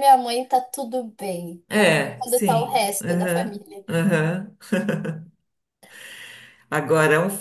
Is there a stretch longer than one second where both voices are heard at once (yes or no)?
yes